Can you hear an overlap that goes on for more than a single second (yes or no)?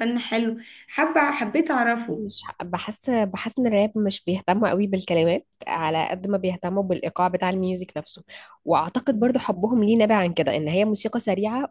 no